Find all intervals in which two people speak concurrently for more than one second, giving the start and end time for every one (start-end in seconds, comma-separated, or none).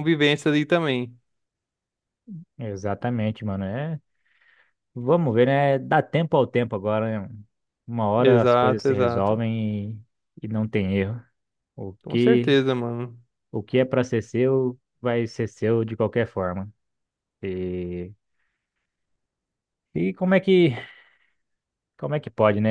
8.2-9.4